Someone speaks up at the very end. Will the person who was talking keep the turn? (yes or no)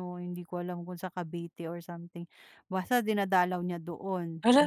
no